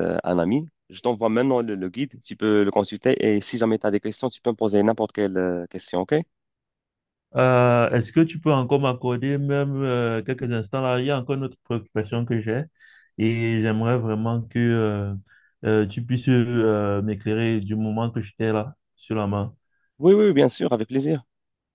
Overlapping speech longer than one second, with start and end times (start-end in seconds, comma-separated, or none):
none